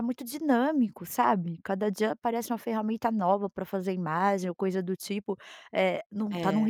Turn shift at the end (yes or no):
no